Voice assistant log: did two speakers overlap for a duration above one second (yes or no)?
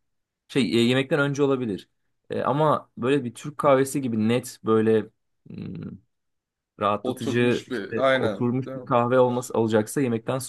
yes